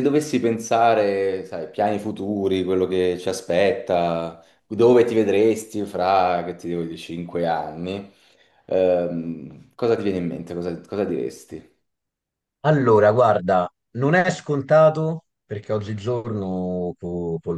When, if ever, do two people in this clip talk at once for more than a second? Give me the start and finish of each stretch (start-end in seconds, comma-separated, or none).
none